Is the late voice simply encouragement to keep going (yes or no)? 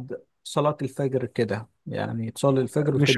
no